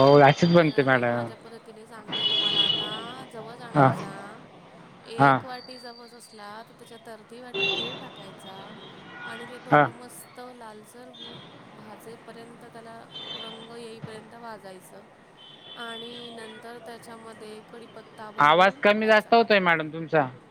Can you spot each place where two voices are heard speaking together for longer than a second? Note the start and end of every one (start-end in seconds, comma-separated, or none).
none